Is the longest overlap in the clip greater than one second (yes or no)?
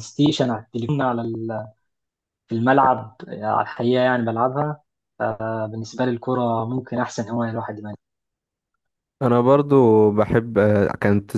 no